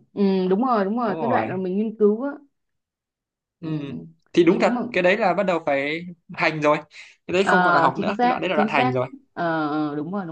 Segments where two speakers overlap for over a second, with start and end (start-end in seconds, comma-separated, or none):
7.4-9.0